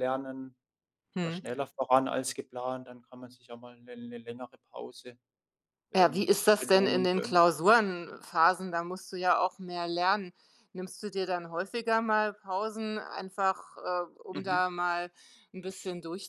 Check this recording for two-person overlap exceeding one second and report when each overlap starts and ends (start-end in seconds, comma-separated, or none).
6.0-7.4